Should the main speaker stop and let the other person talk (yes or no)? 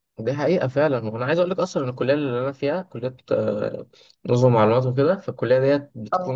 no